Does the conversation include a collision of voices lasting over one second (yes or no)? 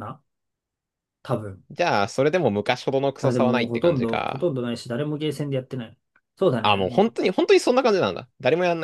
yes